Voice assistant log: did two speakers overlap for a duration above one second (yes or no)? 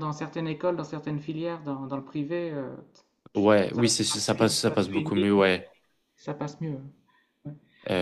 yes